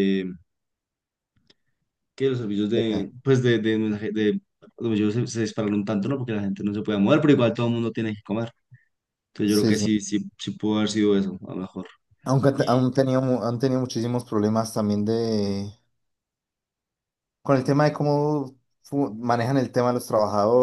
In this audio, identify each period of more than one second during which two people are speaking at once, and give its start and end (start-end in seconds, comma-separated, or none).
none